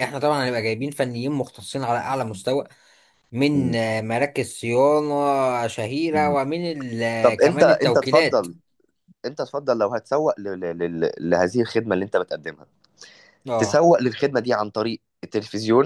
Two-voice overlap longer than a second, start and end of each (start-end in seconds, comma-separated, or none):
7.2-8.5